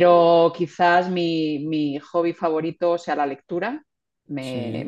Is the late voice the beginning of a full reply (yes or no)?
no